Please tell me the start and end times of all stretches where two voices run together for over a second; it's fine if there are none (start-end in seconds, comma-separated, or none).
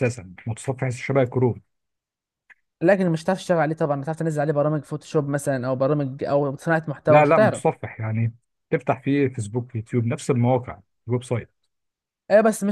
none